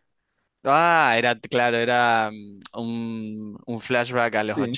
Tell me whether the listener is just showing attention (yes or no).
no